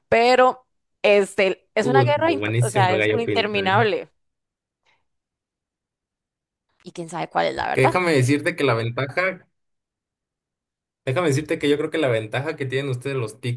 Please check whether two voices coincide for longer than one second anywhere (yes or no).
yes